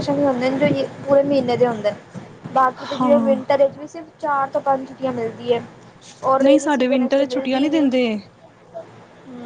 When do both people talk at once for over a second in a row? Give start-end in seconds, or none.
6.4-7.7